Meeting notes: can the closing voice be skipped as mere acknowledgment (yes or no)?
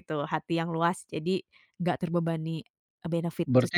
no